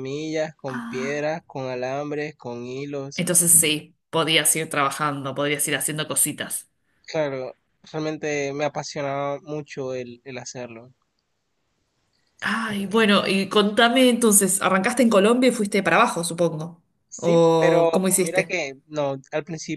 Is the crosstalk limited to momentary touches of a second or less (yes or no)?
no